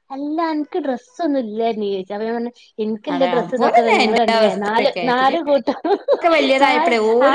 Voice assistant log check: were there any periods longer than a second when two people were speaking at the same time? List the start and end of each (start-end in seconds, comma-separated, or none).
3.1-5.3